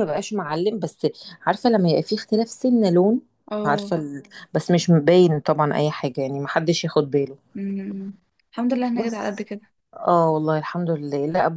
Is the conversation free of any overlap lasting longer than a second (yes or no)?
yes